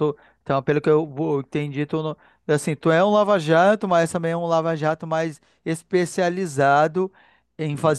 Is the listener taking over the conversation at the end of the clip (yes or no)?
no